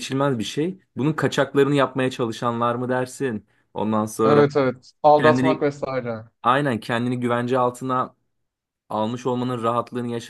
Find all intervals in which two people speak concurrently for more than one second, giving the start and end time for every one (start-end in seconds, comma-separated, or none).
none